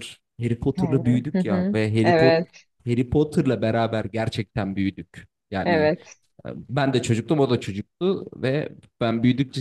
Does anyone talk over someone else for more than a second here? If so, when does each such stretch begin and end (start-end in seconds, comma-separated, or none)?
0.8-2.4